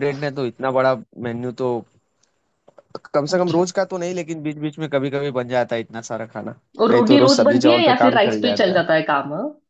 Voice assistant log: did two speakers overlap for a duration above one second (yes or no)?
yes